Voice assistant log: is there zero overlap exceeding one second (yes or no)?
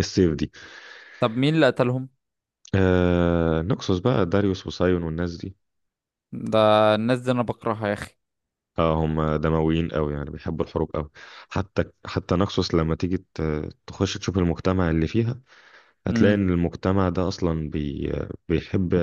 yes